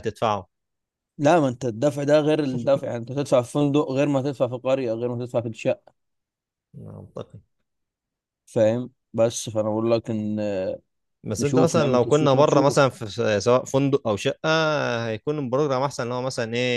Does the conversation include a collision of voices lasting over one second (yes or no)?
yes